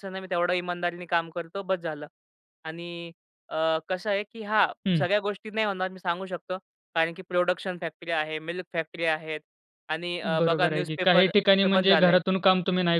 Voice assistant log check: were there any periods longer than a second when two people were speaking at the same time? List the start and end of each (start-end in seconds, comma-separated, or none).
10.2-12.2